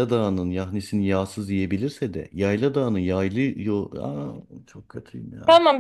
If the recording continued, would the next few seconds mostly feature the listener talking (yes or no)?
yes